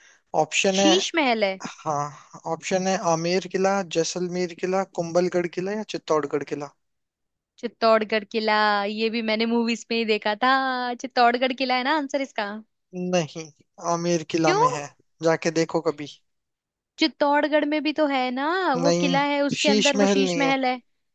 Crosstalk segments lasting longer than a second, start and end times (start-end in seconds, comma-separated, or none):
18.8-20.5